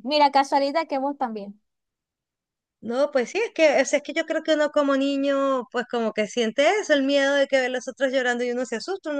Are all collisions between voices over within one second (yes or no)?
yes